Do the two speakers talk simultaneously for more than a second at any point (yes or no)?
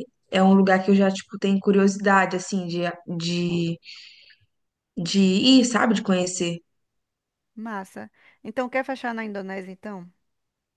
no